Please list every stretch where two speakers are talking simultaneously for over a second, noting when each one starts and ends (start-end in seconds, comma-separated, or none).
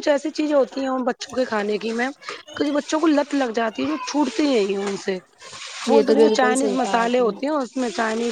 5.9-7.3